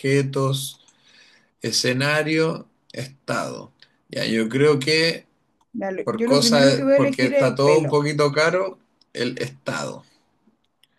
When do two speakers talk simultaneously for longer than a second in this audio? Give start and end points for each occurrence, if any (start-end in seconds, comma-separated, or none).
6.0-8.0